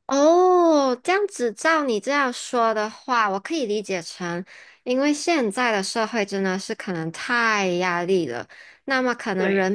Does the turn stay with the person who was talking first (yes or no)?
yes